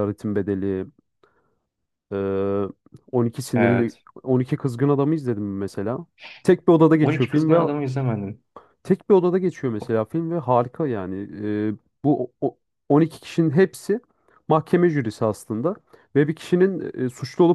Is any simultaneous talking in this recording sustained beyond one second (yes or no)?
no